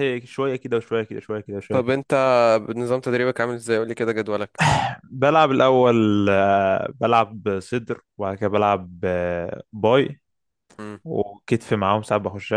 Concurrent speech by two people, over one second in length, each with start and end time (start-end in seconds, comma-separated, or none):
none